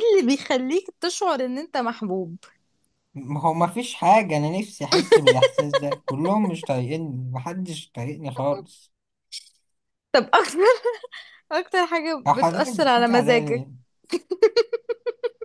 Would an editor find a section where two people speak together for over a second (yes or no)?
yes